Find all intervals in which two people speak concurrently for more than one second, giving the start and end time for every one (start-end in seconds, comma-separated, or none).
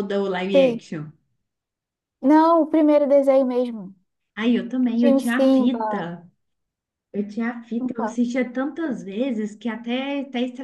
4.8-6.1